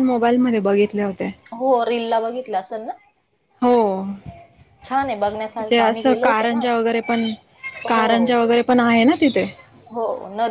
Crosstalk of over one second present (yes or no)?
yes